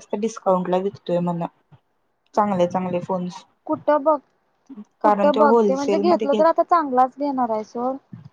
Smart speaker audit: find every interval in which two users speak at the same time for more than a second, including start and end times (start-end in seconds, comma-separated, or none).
5.0-6.4